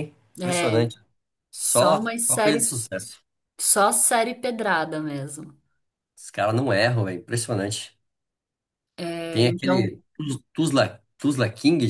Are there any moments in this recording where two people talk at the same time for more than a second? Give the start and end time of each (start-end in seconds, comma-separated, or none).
1.6-2.8